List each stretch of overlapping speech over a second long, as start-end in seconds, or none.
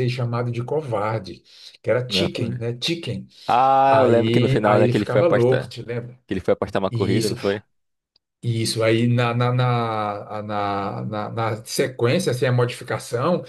3.9-5.7